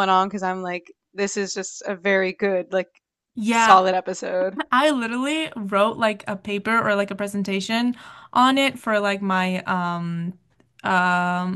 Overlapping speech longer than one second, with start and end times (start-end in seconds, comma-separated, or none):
none